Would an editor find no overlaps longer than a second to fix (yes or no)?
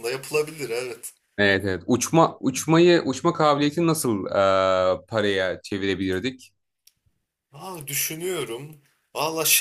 yes